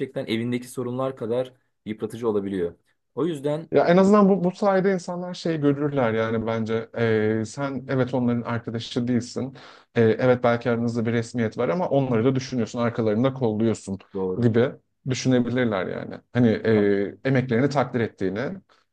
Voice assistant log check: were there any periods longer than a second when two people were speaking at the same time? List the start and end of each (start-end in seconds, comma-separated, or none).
none